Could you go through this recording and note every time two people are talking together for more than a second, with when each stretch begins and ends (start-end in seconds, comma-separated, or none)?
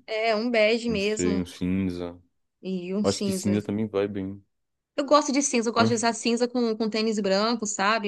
none